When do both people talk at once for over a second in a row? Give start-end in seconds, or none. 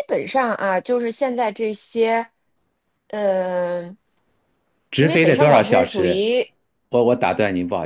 4.9-6.3